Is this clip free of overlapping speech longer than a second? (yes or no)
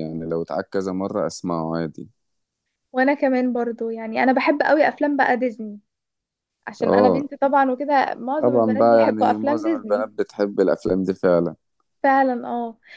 no